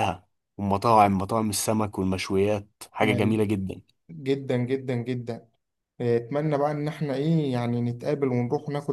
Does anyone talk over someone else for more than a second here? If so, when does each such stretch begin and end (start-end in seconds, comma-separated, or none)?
none